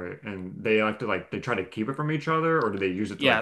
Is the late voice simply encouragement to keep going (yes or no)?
no